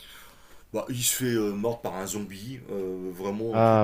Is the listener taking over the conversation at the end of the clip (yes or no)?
no